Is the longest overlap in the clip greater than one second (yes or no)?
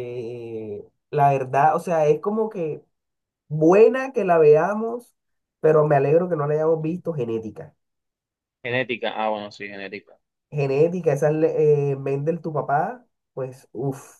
no